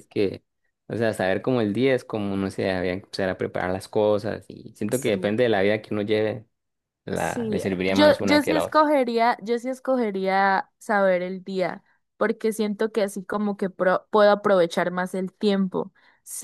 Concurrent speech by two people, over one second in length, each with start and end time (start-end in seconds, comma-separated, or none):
7.1-8.9